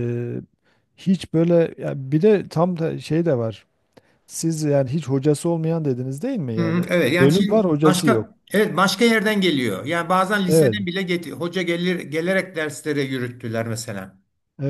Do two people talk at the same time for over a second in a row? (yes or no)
yes